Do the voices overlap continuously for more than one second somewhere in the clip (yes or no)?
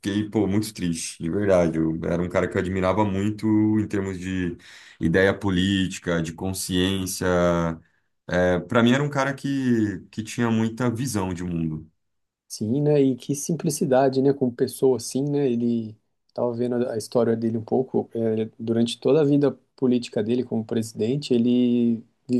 no